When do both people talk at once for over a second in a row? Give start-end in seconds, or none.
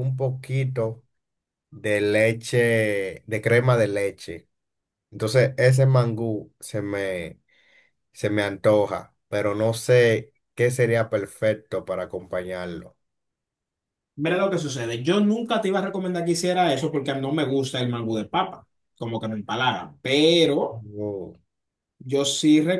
none